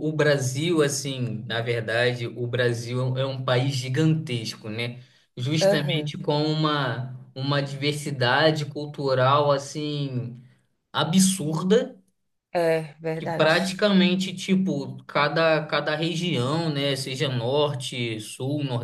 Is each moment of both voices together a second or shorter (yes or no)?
yes